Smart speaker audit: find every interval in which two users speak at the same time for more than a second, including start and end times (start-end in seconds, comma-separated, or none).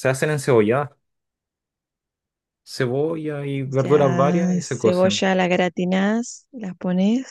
3.7-5.2